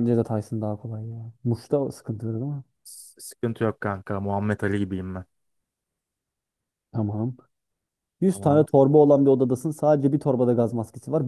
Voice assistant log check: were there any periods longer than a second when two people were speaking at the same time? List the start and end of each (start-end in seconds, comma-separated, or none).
none